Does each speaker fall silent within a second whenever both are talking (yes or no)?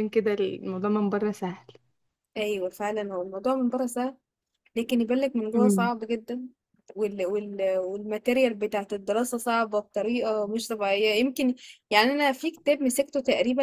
yes